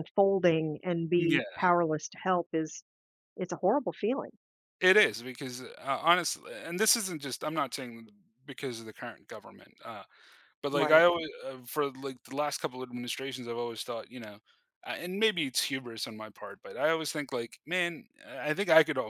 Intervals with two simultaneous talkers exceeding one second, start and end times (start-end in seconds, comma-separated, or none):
none